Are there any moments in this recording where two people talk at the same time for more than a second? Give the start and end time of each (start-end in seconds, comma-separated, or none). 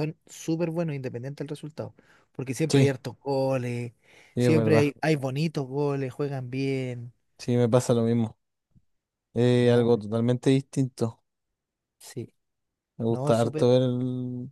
none